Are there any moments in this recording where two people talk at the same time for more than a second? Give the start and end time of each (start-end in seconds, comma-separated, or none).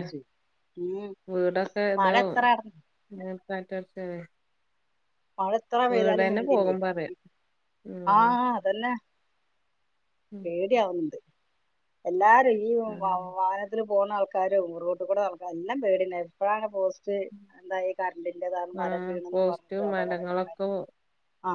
18.9-20.5